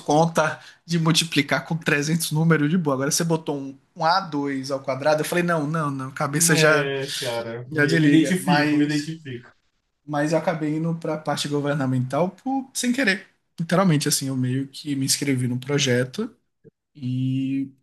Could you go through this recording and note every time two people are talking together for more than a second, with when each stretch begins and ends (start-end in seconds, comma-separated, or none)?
7.7-9.1